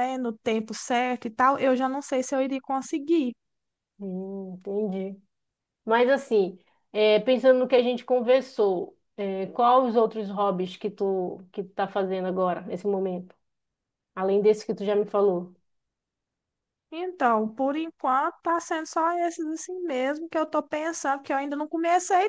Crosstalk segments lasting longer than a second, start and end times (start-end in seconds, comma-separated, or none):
none